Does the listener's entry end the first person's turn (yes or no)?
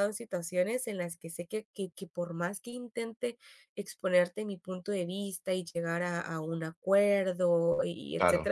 no